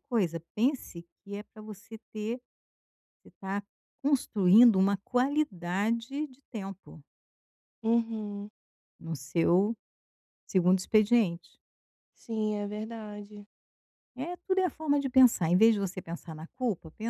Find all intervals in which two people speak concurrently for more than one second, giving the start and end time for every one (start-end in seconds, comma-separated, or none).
none